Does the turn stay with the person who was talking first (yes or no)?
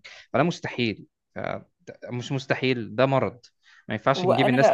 no